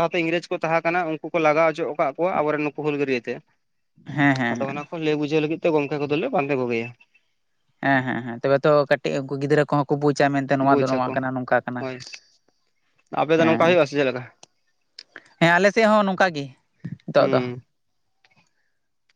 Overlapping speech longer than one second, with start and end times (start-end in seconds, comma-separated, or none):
none